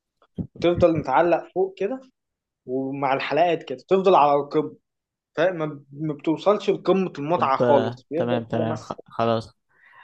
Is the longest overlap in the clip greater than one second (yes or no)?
yes